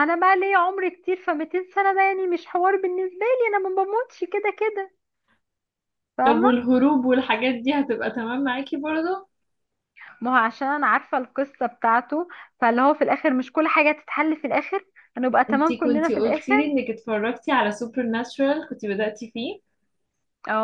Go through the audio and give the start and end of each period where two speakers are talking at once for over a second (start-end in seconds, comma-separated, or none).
15.5-16.7